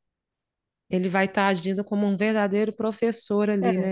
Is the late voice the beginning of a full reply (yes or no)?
yes